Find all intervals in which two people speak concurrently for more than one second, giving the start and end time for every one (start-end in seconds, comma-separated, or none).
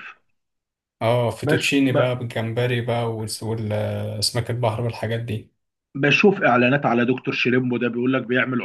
none